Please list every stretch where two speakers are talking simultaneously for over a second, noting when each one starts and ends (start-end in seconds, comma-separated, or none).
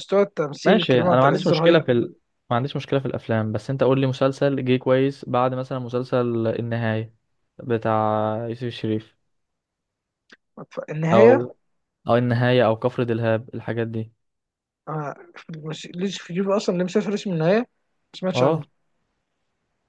0.7-1.9